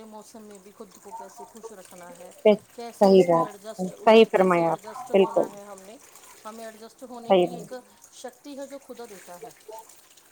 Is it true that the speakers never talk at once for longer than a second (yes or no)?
no